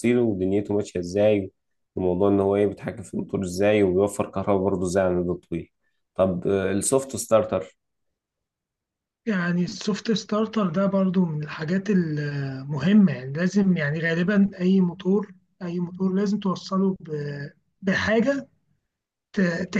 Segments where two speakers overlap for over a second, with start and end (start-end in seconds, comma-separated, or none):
none